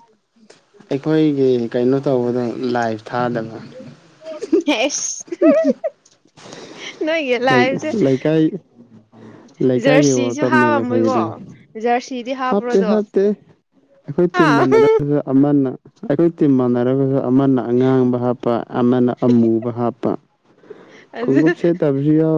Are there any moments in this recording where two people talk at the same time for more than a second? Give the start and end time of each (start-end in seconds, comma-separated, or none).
9.8-11.2